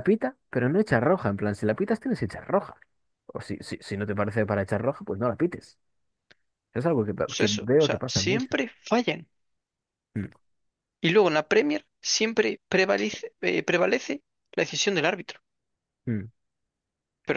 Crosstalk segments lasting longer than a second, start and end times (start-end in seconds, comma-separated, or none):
7.2-8.6